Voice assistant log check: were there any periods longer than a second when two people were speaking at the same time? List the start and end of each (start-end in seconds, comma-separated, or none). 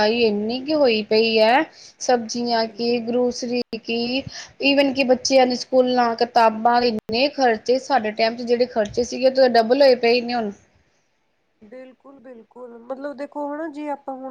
none